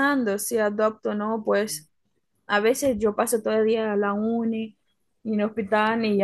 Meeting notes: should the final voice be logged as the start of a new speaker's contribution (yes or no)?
no